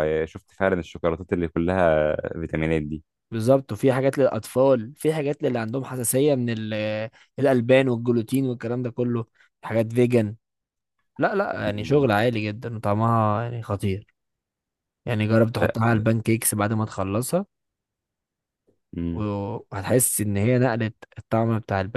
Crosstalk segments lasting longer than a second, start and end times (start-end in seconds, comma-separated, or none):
none